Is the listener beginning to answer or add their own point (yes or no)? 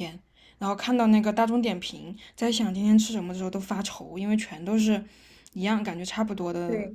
yes